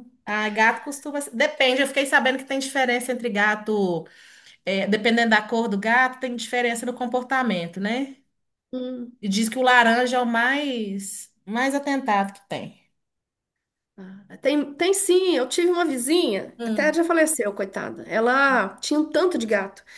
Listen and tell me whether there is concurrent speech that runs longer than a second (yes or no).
no